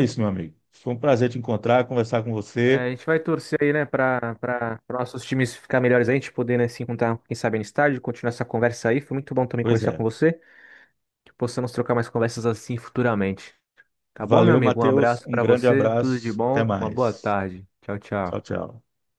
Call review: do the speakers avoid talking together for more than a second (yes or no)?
no